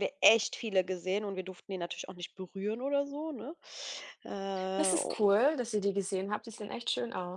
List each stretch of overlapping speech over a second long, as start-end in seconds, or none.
none